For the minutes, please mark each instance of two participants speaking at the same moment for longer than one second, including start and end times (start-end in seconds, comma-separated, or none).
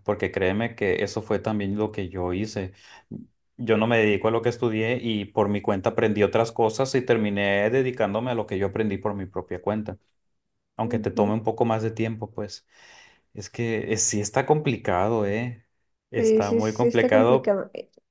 16.2-17.6